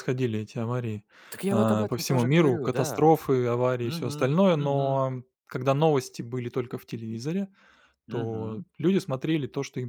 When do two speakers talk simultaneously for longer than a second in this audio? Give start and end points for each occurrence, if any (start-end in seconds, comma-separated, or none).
1.5-3.1, 3.8-5.0